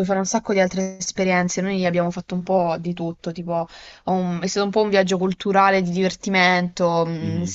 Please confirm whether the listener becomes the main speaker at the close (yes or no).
no